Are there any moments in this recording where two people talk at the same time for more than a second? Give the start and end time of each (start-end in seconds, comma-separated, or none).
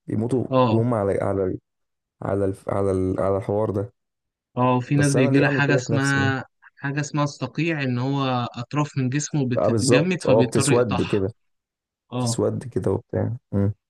4.9-6.3, 9.6-11.2